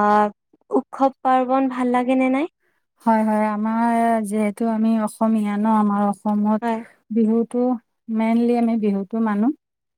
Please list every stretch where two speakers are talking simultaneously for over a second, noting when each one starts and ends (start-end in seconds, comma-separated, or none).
none